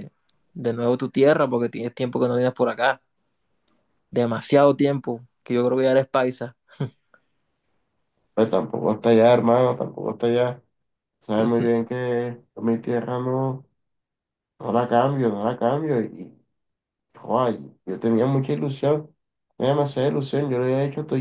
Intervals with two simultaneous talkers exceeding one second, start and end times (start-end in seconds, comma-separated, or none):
none